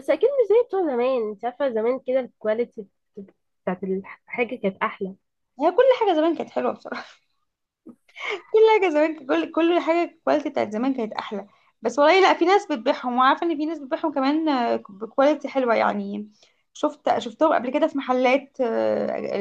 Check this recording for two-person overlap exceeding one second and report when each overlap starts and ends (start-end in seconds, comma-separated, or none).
none